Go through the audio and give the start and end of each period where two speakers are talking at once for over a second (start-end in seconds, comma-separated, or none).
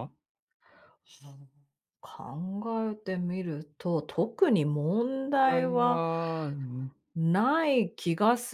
none